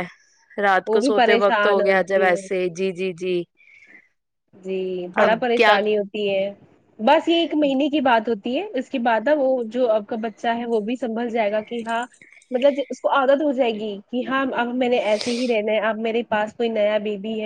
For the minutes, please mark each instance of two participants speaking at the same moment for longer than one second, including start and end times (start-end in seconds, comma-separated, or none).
0.9-2.5